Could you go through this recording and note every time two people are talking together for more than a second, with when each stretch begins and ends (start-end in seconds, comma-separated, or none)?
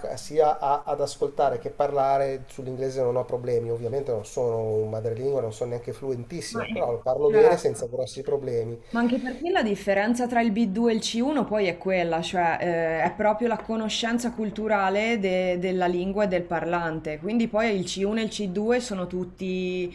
6.5-8.0